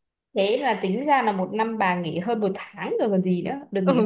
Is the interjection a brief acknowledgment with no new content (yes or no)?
no